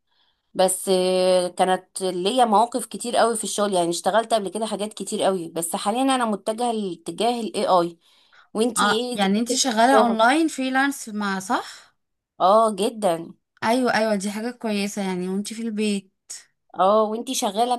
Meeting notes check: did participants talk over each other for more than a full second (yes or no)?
yes